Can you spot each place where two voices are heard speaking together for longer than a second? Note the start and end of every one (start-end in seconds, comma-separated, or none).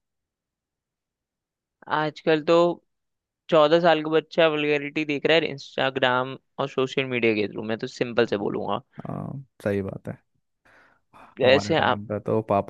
none